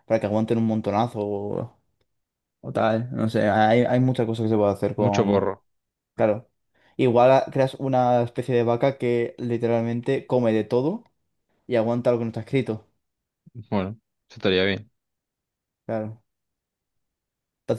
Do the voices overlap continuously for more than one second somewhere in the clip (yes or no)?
no